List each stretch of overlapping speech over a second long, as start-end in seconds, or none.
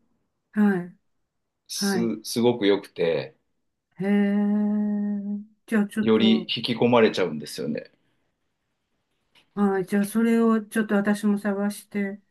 none